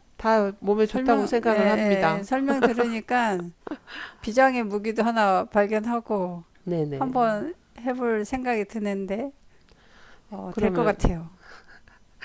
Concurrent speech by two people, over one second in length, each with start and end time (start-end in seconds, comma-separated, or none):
0.8-2.3